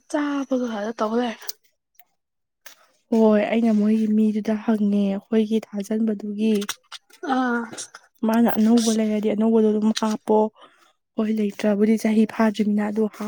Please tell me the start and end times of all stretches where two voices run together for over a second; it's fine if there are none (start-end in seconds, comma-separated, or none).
none